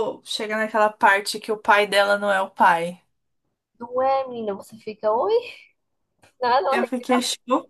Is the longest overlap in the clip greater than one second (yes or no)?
no